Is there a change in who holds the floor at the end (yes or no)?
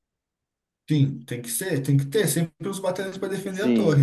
yes